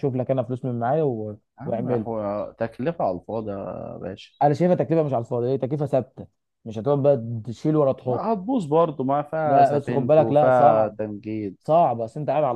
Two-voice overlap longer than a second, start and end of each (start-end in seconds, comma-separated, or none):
9.4-11.0